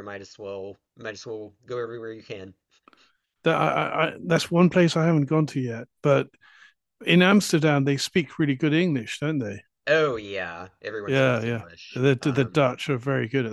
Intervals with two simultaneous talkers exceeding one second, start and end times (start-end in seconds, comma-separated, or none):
11.1-12.6